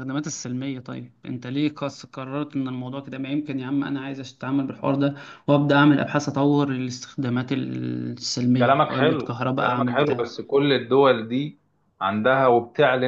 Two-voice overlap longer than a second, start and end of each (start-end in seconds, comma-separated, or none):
8.6-10.2